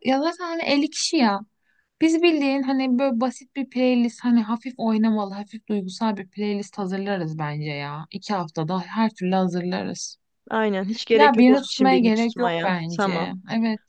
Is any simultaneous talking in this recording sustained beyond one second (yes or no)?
yes